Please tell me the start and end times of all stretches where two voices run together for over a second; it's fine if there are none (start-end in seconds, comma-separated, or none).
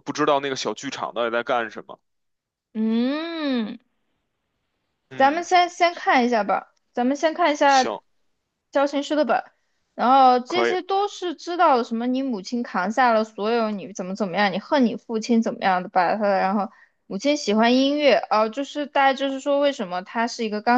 none